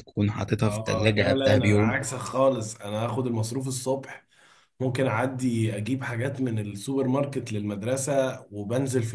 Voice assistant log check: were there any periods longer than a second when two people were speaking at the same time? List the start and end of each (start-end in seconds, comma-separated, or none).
0.7-2.0